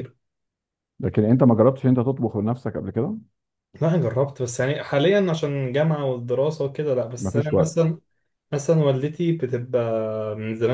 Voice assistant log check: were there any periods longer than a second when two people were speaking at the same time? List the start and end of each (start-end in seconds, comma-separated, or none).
none